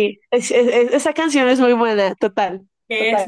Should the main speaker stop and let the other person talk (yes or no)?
yes